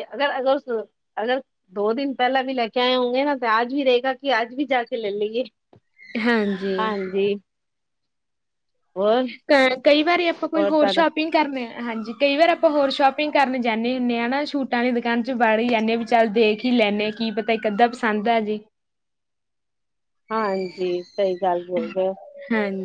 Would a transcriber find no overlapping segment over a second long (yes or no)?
yes